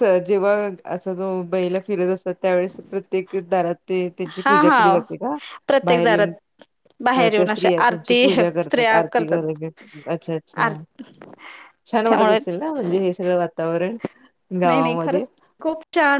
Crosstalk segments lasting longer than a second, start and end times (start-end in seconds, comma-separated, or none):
7.2-9.5